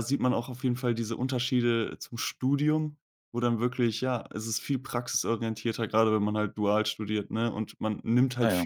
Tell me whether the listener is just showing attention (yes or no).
yes